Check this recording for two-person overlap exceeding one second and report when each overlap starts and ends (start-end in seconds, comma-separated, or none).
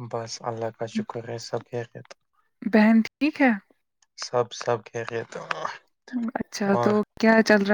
none